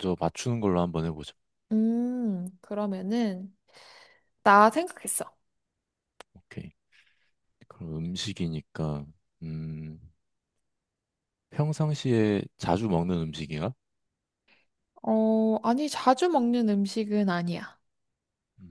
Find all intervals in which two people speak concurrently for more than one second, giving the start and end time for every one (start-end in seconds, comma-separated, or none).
none